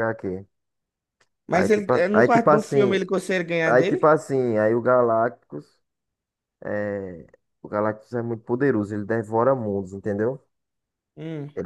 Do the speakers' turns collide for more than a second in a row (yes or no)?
yes